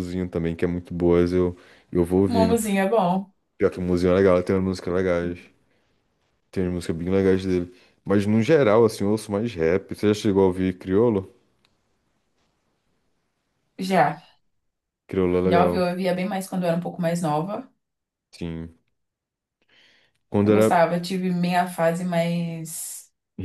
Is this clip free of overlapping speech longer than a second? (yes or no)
yes